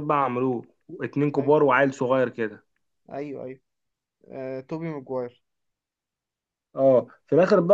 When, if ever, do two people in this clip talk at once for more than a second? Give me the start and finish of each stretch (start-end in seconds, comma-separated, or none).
none